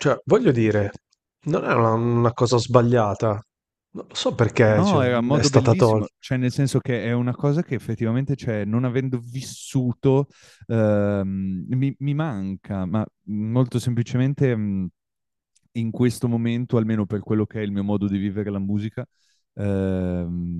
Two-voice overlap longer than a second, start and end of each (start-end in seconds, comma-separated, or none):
4.7-6.1